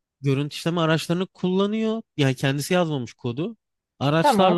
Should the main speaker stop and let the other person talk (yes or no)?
no